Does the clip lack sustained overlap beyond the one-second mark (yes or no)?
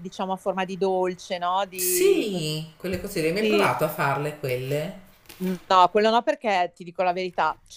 yes